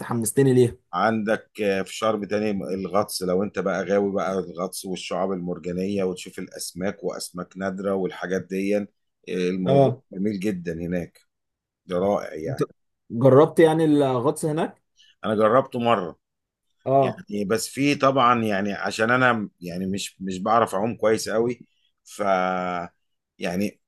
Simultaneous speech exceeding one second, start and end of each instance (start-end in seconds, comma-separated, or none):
none